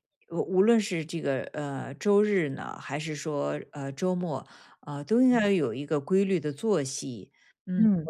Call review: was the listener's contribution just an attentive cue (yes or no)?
no